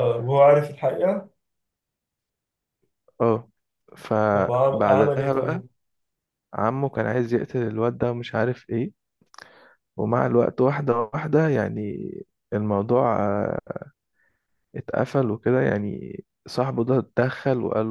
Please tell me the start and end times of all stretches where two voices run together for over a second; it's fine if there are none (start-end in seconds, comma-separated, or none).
4.3-5.6